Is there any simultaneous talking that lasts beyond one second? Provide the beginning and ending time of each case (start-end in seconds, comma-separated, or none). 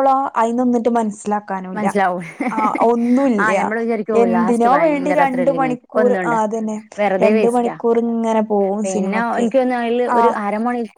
4.2-6.3